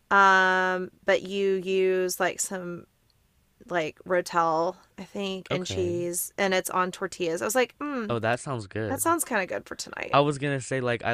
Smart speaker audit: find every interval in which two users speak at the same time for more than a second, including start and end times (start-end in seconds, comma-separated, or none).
none